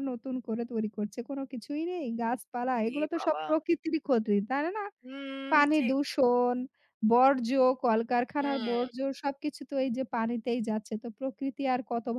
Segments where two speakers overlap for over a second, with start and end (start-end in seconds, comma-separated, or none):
none